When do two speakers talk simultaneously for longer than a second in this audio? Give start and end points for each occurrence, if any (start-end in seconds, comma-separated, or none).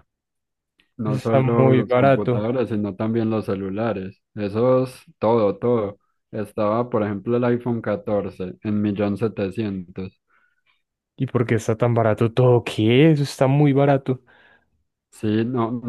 1.0-2.5